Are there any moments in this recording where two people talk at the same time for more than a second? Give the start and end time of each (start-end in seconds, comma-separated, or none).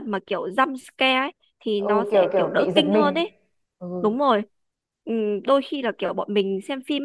1.8-3.2